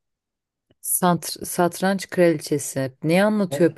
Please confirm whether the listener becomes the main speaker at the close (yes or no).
no